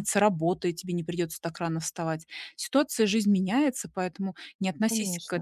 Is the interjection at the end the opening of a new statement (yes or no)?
no